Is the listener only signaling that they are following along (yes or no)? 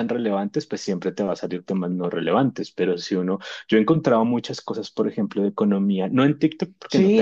no